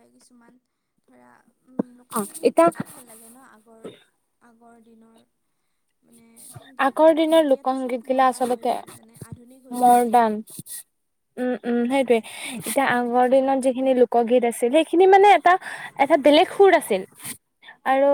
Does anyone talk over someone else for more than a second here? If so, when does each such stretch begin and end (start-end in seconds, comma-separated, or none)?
6.9-8.7